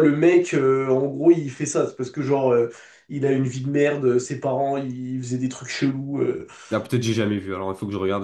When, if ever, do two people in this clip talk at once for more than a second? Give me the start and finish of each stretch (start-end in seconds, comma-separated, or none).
none